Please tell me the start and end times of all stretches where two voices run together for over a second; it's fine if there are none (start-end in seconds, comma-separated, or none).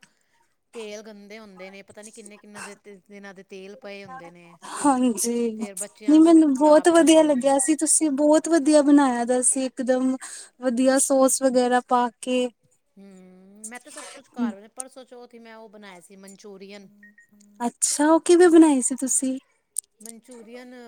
6.1-7.5